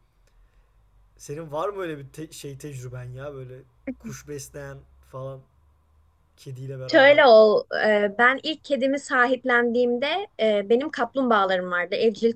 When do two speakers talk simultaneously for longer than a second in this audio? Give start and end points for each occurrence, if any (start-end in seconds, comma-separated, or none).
none